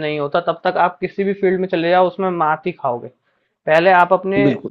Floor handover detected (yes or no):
no